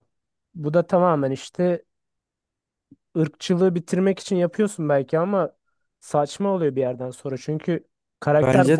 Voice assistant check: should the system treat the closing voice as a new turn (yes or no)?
yes